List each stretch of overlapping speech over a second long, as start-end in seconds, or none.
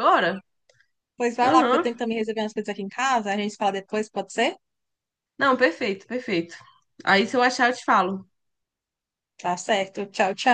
none